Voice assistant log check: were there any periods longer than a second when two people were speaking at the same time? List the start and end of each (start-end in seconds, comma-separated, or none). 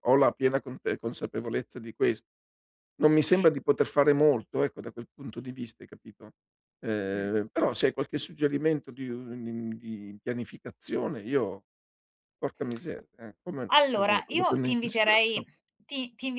13.7-15.4